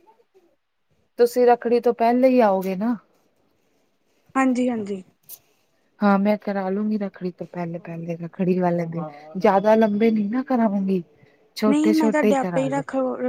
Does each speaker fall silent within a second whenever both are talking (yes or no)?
yes